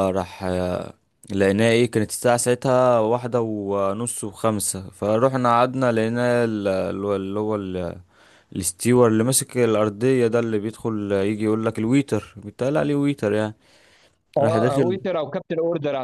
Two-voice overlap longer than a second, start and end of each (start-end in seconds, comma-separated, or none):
none